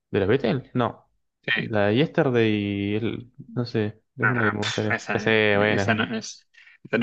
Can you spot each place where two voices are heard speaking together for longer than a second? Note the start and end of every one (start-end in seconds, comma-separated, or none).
4.2-5.9